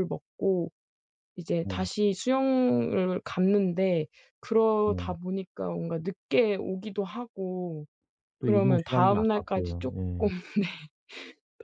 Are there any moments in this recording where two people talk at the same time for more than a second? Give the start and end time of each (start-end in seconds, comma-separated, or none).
8.4-10.3